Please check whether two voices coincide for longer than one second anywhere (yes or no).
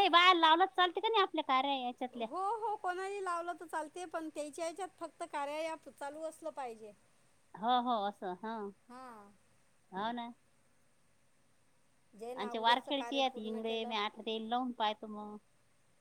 yes